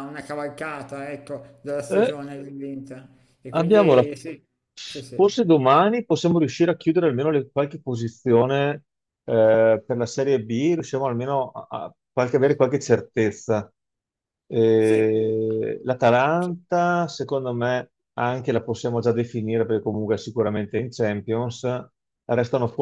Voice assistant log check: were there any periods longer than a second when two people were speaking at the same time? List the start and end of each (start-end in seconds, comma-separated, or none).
none